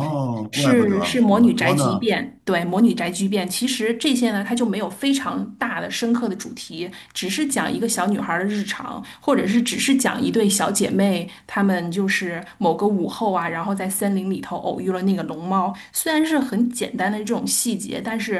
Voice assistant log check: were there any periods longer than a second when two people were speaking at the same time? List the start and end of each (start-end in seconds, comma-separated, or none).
0.5-2.1